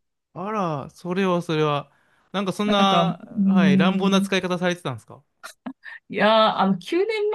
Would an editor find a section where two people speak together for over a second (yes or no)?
yes